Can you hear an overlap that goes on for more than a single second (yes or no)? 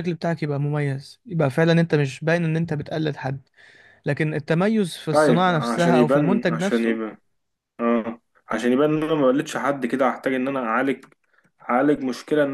yes